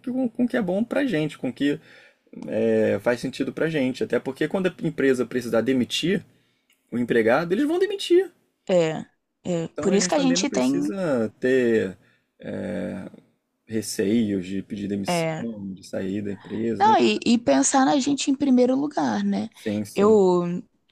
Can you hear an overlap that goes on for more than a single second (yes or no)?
yes